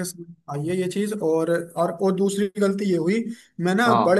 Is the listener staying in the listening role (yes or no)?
yes